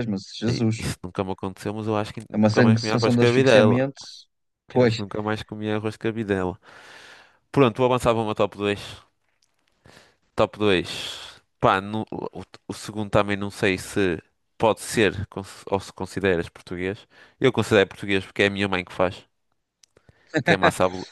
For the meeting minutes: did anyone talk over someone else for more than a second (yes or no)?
yes